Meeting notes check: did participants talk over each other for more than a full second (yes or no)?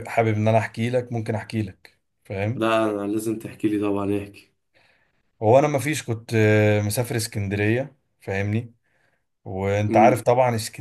no